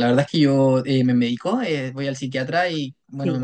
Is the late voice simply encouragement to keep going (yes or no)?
yes